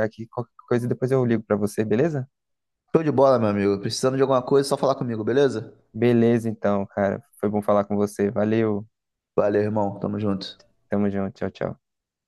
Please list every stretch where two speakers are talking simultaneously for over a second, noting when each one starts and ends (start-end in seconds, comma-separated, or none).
none